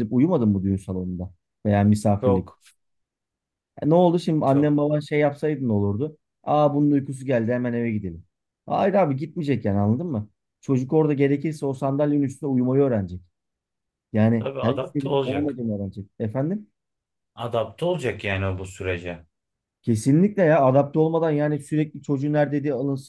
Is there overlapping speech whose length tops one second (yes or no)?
yes